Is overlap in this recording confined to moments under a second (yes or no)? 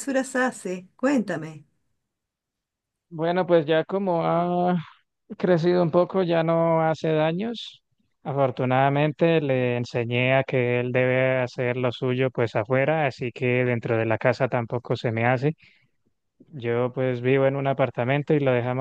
yes